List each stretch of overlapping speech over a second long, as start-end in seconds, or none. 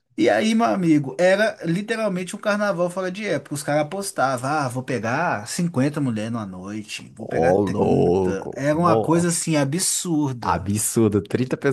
7.2-9.4